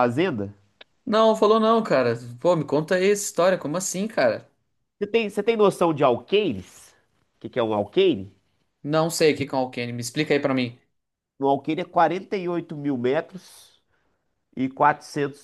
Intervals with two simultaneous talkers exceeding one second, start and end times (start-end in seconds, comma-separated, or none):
none